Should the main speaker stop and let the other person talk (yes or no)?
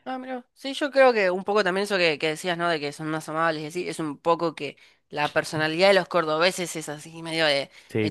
no